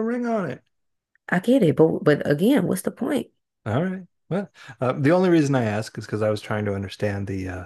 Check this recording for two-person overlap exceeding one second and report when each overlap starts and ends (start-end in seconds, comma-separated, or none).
none